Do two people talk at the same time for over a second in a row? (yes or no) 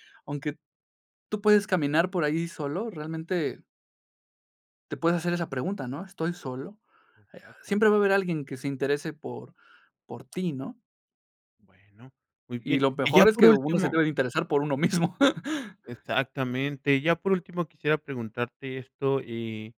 yes